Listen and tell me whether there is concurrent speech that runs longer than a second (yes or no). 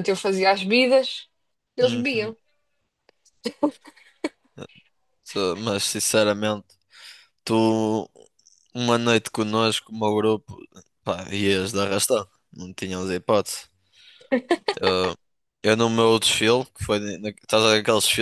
no